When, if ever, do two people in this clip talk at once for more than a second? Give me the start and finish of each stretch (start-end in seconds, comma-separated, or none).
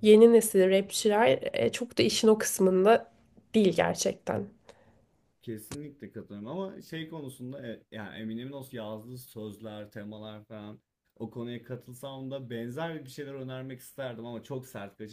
none